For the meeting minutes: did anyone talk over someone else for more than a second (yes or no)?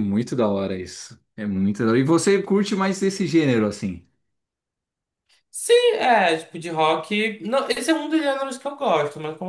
no